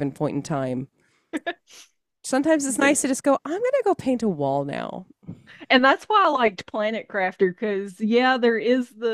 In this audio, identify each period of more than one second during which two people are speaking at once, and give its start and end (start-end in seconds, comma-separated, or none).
none